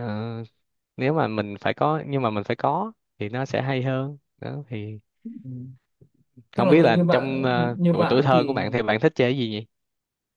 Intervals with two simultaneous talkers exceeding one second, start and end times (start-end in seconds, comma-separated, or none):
6.6-8.6